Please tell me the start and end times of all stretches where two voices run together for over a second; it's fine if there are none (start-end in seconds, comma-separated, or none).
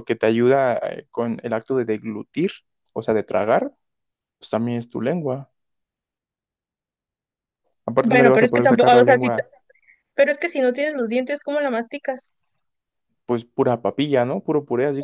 8.0-9.4